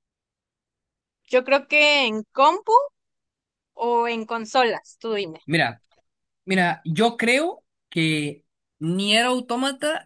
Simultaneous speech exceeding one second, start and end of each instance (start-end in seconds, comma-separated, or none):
none